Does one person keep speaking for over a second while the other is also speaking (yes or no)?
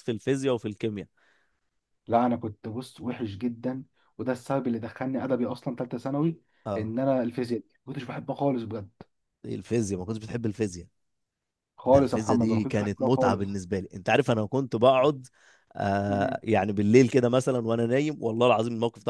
yes